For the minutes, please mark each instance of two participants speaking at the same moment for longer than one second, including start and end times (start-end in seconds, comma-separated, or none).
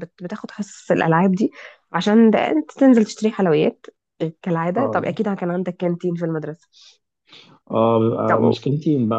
none